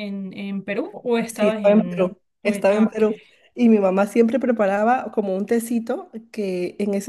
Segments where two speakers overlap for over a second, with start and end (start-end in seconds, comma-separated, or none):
1.3-3.0